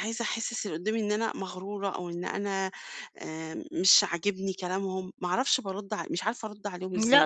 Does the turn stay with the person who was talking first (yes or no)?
no